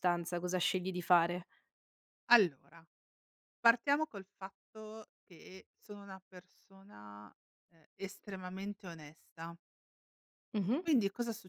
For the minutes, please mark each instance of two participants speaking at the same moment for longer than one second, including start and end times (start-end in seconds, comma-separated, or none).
none